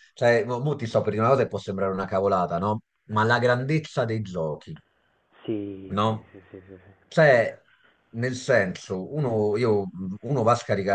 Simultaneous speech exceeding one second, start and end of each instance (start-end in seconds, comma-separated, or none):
none